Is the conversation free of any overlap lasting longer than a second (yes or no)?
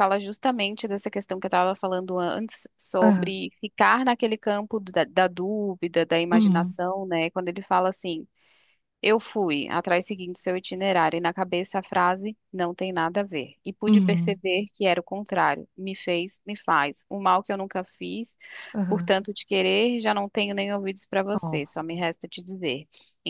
yes